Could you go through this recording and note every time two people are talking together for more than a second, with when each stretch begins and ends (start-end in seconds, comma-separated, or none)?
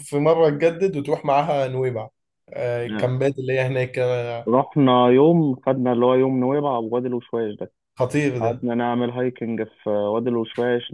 none